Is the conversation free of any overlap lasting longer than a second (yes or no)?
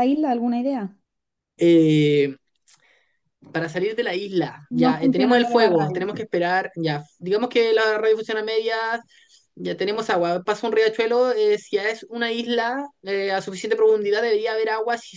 no